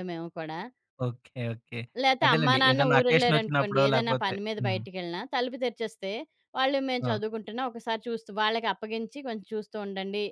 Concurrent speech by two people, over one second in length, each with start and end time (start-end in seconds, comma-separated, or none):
2.2-4.8